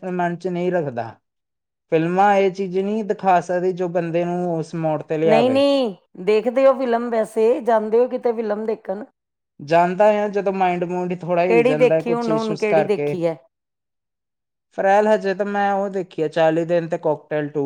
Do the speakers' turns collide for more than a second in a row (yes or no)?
yes